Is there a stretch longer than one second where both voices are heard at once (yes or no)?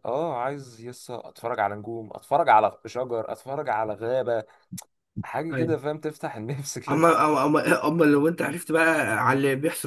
no